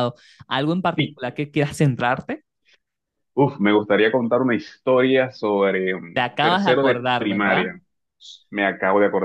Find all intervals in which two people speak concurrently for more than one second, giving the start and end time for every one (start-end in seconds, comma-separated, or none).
6.1-7.6